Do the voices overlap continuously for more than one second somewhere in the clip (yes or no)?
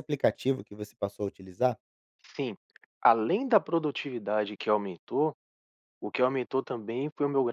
no